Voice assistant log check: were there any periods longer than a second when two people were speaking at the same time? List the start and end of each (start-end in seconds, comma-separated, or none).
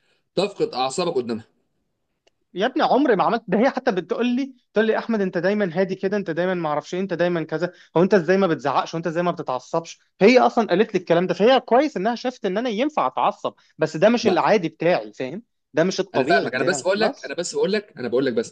16.1-17.3